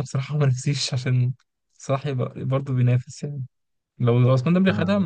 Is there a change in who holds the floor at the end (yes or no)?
no